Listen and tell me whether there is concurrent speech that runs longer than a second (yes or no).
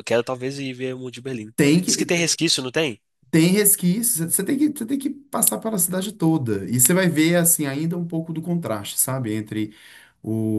no